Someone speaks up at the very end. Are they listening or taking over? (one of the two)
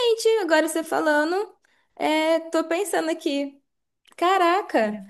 listening